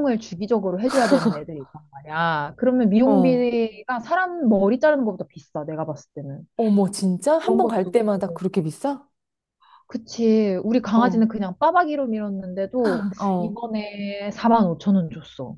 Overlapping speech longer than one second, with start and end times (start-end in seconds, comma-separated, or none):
none